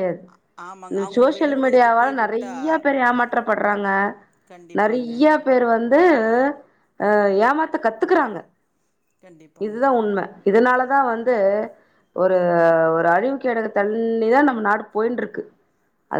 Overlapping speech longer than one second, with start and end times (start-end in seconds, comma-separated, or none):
1.2-2.5